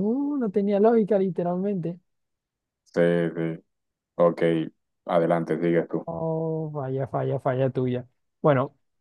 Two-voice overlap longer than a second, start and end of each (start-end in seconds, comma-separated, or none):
none